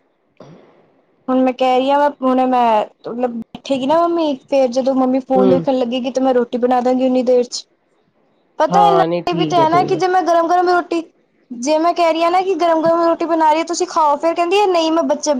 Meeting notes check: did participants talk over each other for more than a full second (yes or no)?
yes